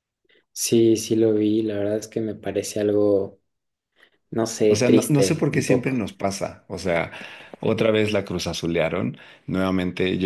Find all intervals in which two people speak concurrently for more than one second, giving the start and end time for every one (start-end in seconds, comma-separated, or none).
4.7-6.1